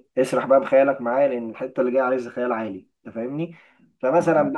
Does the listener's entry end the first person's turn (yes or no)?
no